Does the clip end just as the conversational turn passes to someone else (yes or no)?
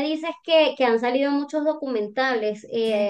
no